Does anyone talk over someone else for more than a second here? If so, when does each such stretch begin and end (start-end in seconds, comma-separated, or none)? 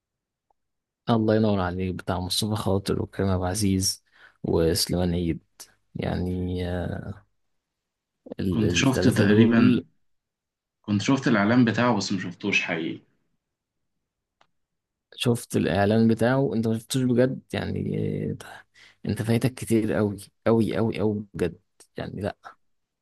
8.5-9.8